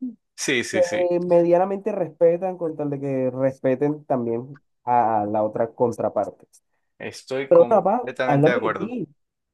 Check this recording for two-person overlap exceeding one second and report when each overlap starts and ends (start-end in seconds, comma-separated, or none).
7.5-8.9